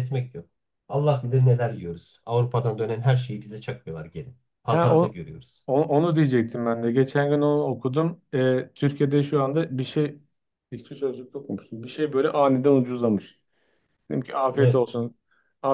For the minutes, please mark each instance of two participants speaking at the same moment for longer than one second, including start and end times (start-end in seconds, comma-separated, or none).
none